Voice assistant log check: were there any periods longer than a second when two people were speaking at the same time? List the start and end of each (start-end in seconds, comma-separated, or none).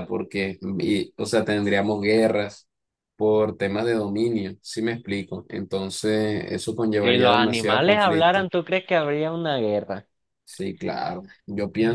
7.0-8.5